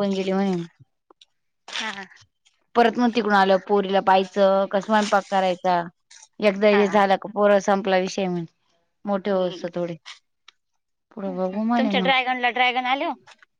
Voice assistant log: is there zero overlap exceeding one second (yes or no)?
yes